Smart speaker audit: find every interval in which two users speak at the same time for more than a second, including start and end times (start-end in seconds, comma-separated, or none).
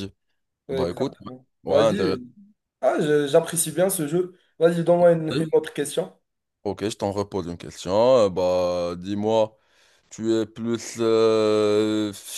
0.7-2.2